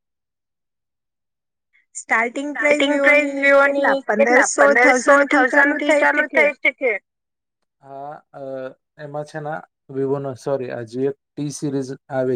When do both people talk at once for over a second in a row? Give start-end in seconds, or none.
2.5-5.5